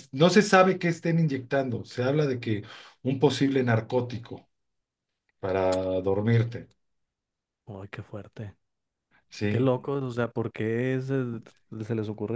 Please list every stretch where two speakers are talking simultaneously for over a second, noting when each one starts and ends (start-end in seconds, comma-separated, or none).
none